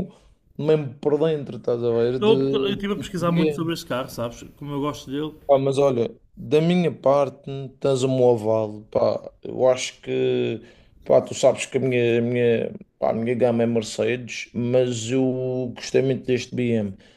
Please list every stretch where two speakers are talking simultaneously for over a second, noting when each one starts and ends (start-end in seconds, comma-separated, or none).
2.1-3.7